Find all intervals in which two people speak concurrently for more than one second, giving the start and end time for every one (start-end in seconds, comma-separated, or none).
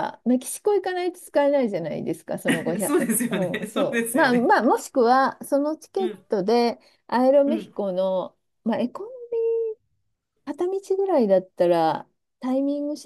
2.8-4.5